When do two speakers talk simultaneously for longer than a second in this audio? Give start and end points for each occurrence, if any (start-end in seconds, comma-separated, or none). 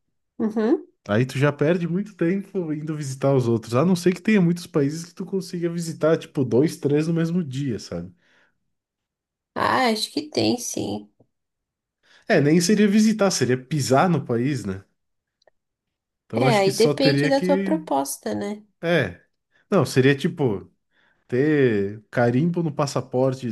16.3-17.8